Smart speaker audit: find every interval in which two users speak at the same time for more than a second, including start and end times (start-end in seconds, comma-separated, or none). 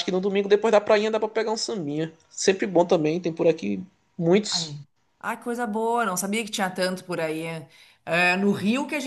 none